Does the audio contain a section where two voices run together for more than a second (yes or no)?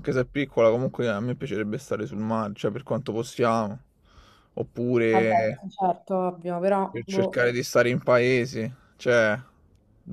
no